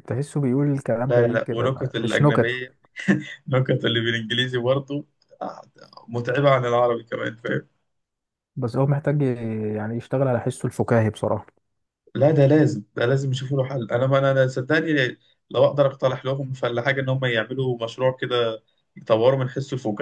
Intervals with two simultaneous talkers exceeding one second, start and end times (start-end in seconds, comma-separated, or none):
1.1-2.6